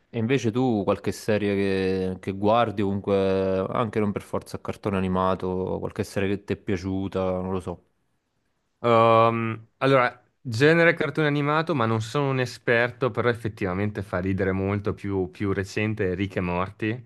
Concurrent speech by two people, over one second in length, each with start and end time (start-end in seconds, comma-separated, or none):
none